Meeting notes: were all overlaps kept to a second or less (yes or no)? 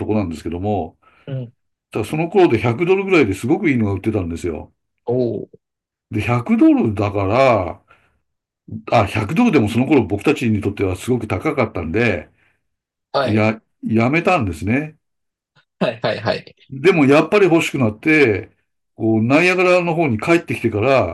yes